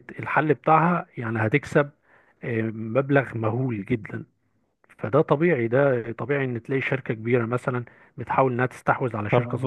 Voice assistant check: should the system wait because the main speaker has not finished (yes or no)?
no